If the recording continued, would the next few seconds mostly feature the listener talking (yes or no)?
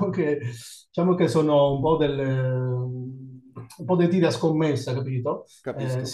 no